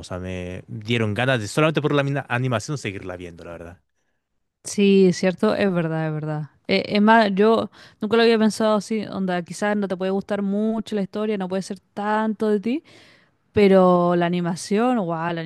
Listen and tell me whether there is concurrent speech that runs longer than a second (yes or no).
no